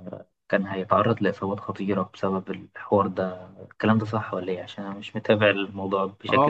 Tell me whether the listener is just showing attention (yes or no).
no